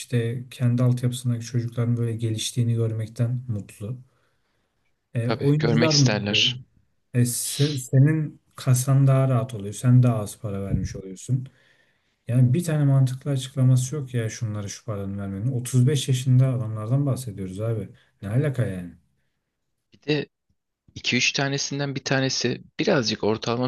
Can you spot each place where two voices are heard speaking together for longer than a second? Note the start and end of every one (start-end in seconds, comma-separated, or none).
5.2-6.5